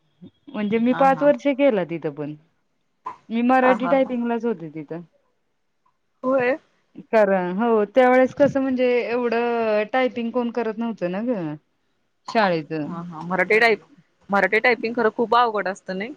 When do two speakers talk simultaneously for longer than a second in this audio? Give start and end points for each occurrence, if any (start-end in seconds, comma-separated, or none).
none